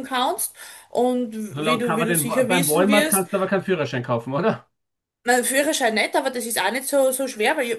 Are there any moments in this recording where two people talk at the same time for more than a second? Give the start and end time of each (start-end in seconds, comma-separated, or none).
1.5-3.2